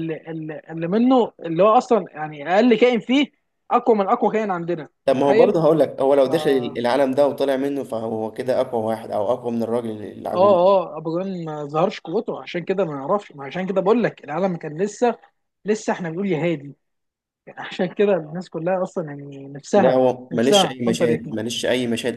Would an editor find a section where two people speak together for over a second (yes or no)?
yes